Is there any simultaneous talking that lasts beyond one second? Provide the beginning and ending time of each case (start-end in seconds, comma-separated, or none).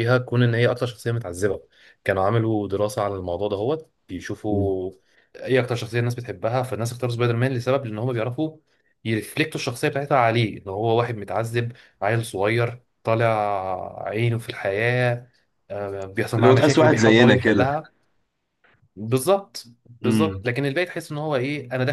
16.4-17.6